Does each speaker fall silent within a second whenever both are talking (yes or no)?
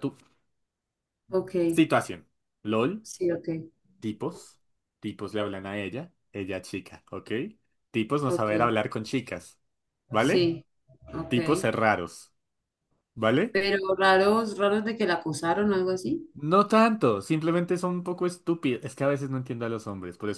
yes